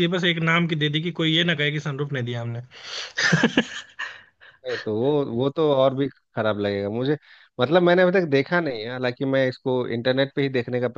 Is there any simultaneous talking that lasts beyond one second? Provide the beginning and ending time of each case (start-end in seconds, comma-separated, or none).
none